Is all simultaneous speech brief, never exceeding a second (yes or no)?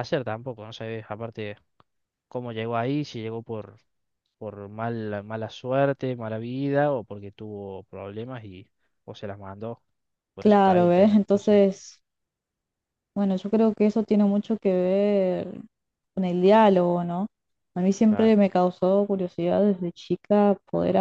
no